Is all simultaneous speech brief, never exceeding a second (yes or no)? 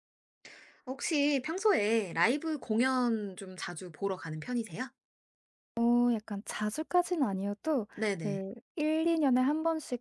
yes